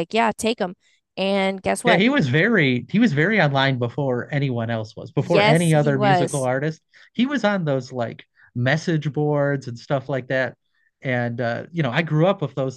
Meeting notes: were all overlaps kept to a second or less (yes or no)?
no